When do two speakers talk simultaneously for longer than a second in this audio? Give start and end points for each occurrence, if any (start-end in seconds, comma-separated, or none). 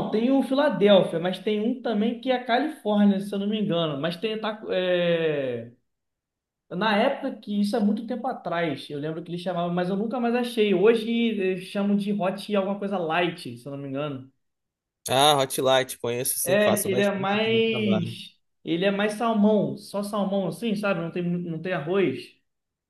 16.4-18.2